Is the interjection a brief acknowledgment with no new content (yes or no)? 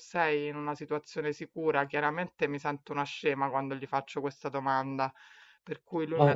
yes